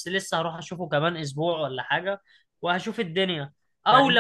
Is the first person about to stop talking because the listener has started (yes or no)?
no